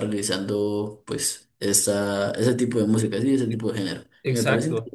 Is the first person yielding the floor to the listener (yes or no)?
yes